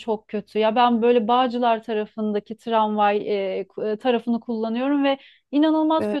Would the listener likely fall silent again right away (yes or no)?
yes